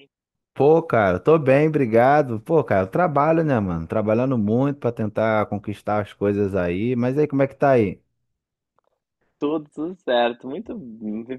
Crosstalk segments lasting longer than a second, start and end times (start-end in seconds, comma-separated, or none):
none